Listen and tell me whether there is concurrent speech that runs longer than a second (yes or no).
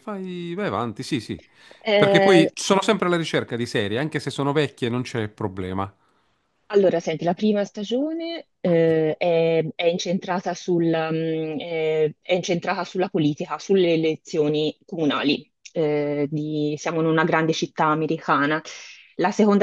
no